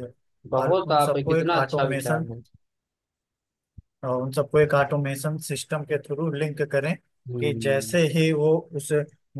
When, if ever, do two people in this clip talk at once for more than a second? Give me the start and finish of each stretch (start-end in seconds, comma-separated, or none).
0.6-2.3